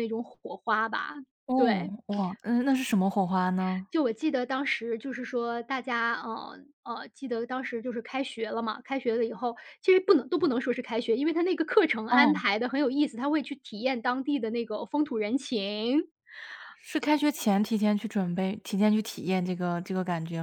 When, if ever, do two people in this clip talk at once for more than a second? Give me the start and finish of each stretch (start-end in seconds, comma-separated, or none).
none